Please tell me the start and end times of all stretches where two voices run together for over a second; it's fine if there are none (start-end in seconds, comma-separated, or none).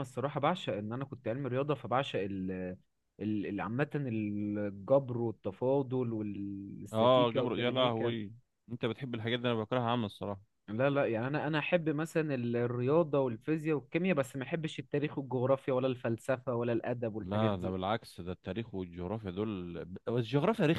6.9-8.1